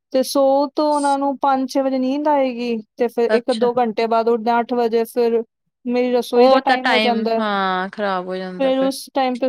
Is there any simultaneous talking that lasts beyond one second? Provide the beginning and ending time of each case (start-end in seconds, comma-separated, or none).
none